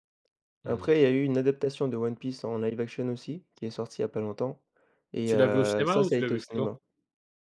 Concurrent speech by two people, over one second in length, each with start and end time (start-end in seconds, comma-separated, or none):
5.2-6.7